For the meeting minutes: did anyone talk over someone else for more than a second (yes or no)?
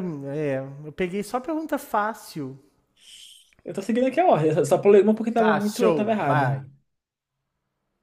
yes